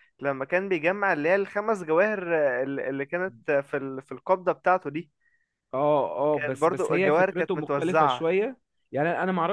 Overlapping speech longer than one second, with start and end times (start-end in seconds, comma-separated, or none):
6.3-8.2